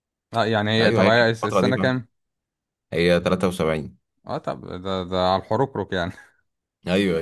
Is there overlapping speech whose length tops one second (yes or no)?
yes